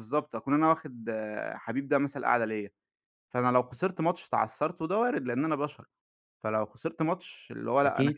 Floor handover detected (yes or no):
no